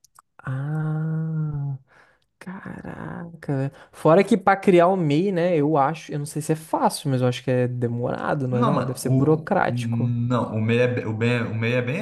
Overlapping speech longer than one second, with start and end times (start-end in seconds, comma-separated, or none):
8.5-10.1